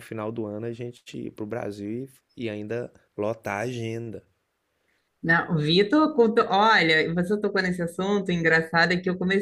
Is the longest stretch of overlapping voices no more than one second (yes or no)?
yes